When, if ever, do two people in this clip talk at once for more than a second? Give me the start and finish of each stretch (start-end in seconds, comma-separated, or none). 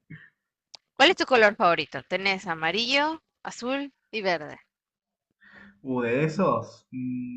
none